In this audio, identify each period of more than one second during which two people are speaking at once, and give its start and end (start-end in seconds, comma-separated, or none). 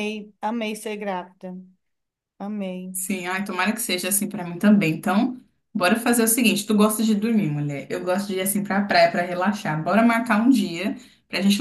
none